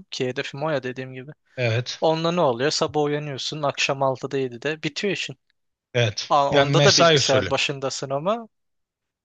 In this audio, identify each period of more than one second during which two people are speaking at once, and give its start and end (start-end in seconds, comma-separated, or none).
6.3-7.5